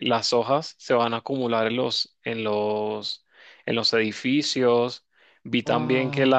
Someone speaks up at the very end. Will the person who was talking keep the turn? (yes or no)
yes